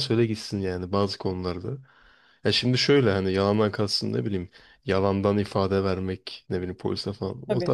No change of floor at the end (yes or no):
yes